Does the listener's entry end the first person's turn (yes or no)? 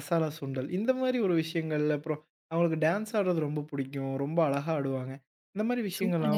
yes